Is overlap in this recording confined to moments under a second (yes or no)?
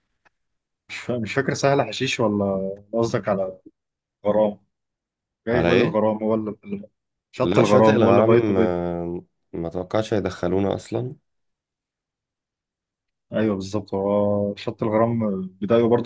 no